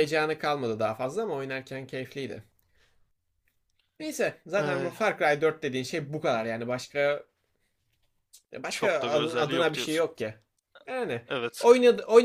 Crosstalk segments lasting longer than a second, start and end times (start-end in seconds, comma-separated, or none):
8.7-10.1